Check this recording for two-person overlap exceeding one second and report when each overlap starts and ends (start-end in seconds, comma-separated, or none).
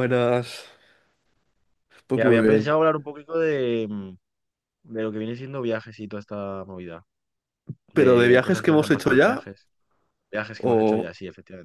7.9-9.5